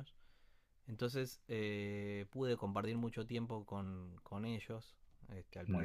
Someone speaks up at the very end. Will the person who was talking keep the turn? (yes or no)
yes